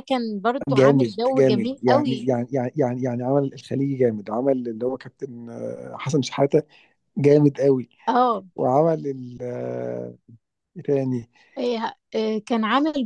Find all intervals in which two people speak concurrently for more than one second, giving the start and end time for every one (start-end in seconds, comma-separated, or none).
0.7-2.2